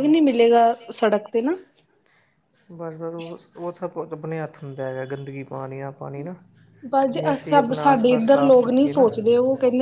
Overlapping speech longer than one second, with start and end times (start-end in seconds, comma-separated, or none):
7.1-9.1